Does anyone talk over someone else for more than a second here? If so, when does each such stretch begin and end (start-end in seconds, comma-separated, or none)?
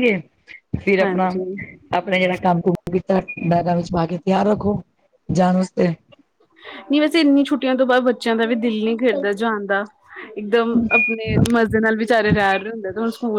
none